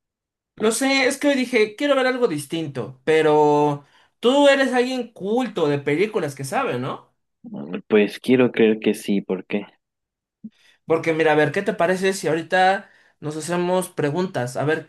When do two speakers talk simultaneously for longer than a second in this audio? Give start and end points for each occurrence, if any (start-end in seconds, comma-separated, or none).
none